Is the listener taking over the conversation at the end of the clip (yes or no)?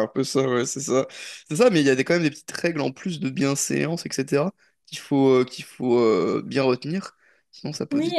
yes